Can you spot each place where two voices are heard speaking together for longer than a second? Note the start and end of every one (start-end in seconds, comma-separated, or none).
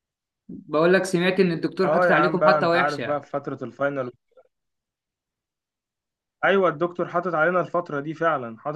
1.9-3.2